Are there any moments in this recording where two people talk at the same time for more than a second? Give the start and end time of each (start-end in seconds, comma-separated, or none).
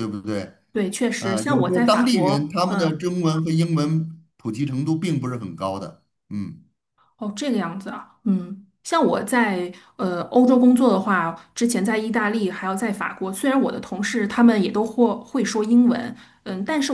1.2-3.0